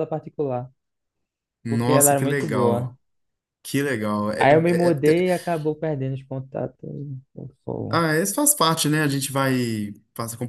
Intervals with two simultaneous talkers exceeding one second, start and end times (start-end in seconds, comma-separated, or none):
1.7-2.9